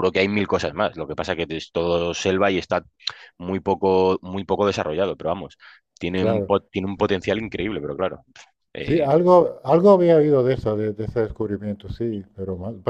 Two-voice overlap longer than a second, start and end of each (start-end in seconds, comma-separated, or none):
none